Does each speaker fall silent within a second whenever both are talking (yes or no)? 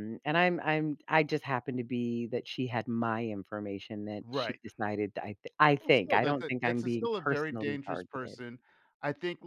no